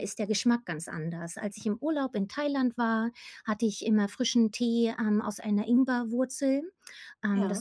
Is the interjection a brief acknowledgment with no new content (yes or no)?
yes